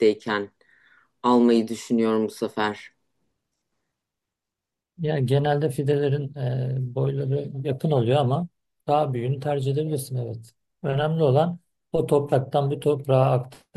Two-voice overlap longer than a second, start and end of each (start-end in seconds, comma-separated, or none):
none